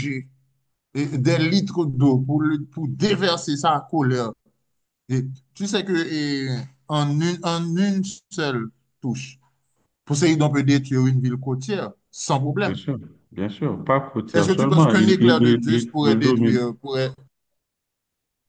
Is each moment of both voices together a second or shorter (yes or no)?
no